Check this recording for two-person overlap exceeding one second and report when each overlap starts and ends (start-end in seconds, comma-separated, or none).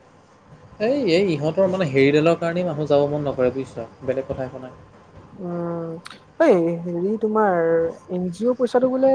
none